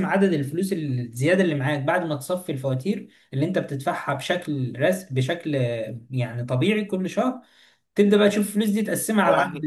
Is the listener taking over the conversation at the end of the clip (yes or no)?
yes